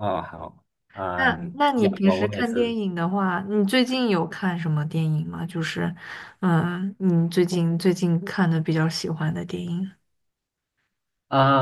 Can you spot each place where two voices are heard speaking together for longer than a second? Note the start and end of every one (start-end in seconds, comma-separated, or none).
1.1-2.8